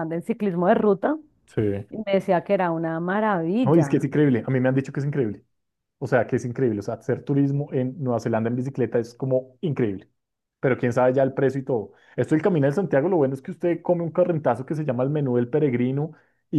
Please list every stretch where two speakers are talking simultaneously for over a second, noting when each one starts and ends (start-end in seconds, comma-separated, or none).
none